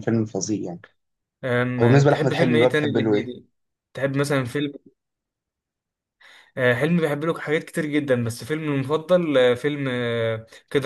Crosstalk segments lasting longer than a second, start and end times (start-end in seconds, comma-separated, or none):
1.8-3.3